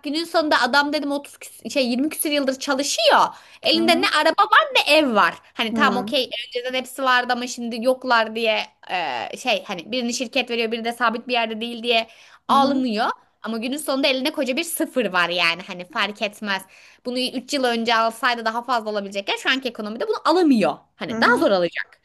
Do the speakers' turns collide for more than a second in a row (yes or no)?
no